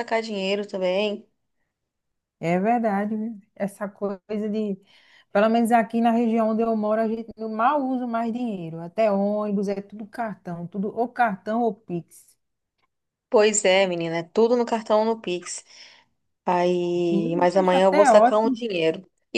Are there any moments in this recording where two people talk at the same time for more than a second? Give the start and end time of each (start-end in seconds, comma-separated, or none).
17.1-18.6